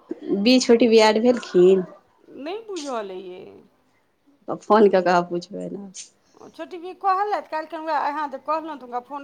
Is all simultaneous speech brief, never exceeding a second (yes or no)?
yes